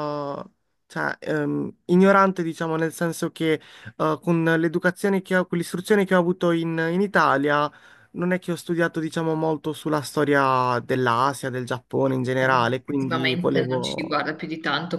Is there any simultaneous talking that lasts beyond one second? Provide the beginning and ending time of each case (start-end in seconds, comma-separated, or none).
12.4-14.1